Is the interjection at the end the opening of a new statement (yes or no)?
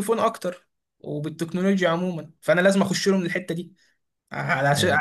no